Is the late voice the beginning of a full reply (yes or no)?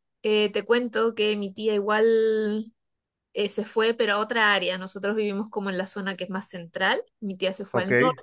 no